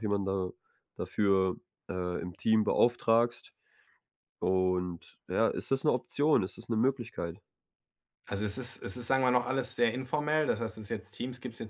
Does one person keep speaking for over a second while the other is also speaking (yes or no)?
no